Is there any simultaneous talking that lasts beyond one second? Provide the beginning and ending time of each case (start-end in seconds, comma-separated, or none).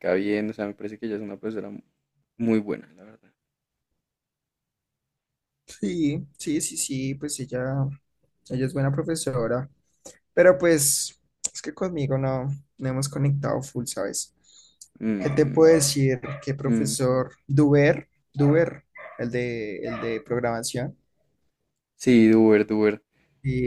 none